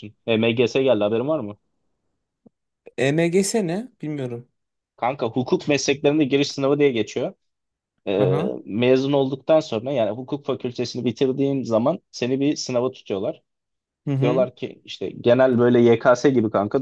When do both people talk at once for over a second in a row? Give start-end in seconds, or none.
none